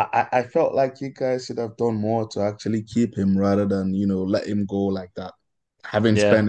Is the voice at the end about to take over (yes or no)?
no